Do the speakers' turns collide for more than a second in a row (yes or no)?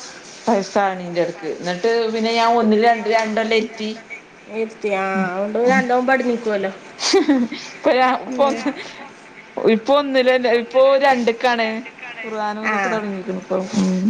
no